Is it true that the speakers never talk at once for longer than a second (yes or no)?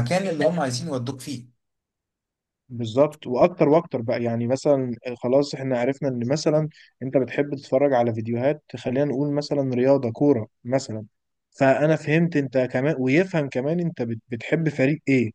yes